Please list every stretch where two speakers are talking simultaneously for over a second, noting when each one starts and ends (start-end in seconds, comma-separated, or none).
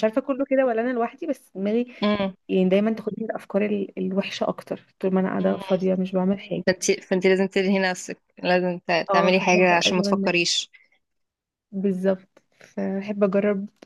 9.1-10.5